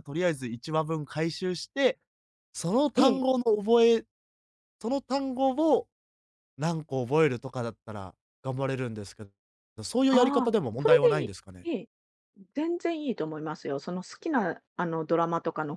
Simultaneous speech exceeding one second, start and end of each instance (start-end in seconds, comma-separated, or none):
10.1-11.7